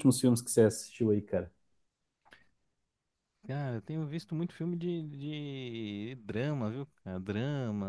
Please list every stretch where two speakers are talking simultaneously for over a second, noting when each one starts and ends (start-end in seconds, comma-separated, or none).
none